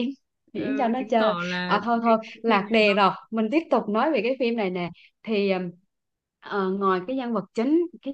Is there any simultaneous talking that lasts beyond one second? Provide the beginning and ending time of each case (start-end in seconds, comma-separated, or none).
0.6-3.0